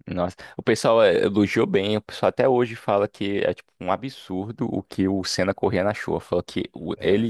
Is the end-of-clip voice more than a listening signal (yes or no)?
no